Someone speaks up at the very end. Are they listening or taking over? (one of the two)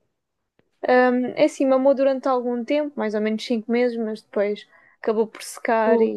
listening